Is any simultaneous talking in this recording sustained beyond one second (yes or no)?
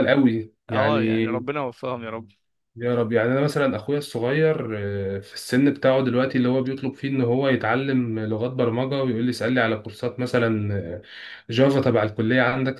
no